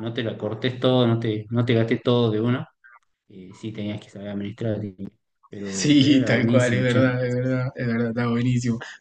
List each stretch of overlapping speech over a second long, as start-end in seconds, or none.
5.7-7.0